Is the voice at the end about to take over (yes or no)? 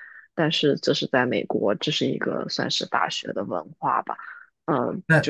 yes